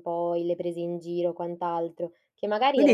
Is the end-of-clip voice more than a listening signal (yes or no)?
yes